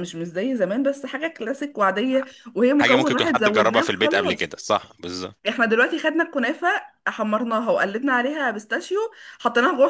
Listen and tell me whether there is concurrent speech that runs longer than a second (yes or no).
yes